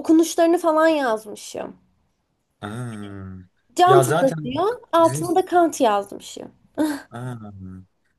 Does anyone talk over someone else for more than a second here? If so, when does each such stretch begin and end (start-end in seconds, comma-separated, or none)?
3.9-5.2